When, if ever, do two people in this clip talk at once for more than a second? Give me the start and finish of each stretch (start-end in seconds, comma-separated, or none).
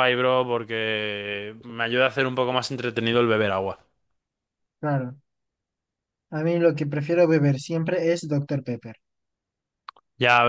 none